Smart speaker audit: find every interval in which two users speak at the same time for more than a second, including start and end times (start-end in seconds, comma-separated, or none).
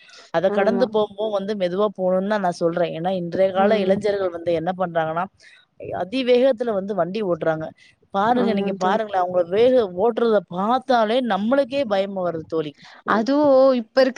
none